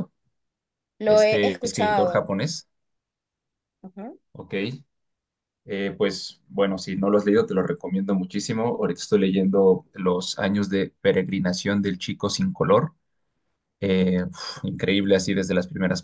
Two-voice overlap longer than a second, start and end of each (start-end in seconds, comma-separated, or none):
1.1-2.3